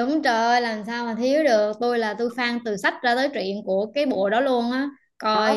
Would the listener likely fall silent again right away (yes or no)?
no